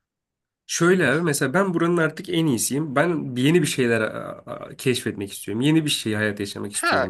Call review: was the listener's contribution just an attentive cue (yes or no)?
no